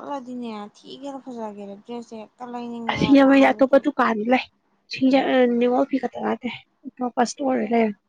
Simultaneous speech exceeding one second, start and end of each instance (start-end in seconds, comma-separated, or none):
none